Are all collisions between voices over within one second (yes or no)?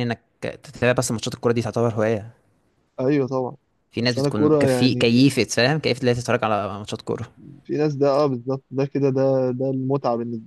no